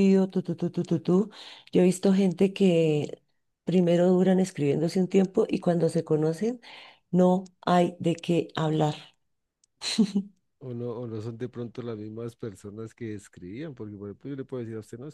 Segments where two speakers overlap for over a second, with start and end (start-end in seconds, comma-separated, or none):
none